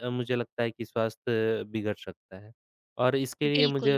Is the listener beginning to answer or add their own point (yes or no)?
no